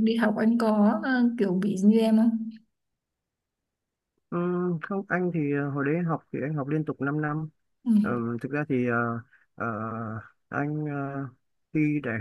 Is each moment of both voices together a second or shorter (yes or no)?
yes